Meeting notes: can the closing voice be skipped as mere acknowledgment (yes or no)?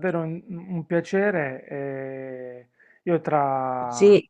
yes